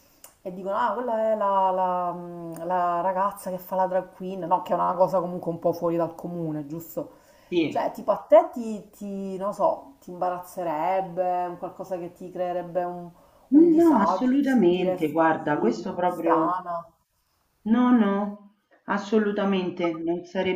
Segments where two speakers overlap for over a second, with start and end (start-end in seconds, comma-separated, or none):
13.8-16.6